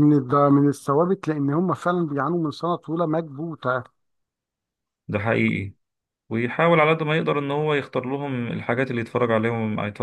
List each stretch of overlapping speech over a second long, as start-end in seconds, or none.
none